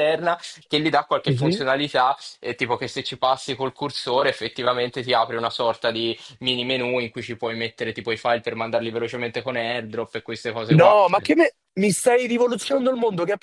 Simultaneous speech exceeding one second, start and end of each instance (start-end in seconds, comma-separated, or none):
none